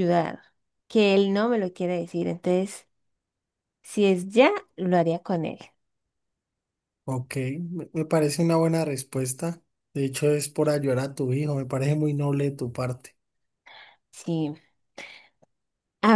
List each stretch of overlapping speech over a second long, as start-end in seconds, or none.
none